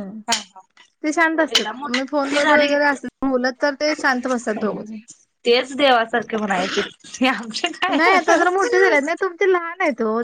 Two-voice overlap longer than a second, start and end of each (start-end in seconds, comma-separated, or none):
1.6-3.0